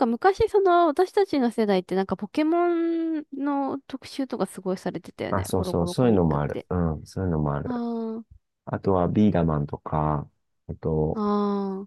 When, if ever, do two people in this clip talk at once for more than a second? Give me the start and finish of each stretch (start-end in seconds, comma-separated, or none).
5.3-6.7